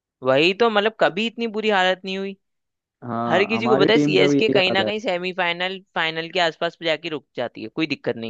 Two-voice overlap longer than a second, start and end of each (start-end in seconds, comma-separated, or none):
3.3-4.9